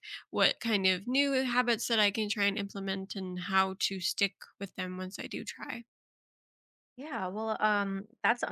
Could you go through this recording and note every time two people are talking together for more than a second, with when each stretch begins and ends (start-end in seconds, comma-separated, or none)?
none